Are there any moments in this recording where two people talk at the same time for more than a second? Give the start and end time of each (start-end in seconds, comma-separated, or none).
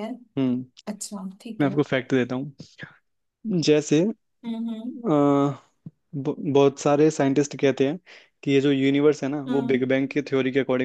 none